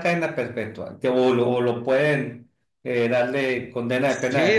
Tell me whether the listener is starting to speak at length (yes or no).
yes